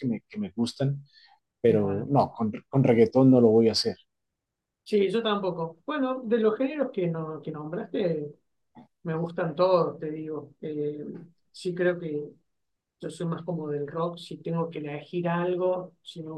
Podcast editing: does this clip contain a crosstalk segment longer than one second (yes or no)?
no